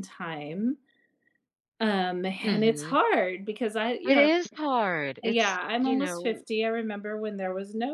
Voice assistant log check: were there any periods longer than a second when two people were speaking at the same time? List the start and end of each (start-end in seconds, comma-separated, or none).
5.2-6.4